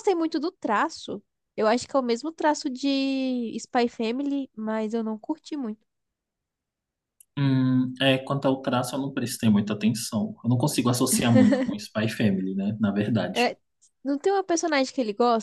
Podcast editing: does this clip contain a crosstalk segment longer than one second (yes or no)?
no